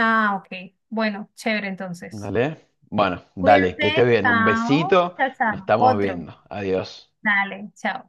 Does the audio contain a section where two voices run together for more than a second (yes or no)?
yes